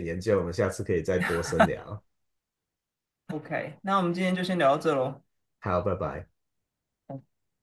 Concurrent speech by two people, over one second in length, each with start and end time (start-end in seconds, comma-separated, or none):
none